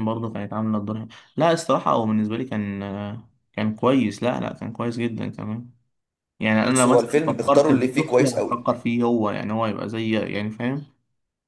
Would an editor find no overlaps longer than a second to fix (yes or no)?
no